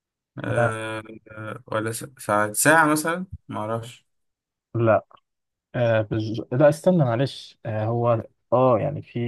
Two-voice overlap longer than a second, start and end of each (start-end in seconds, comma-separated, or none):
none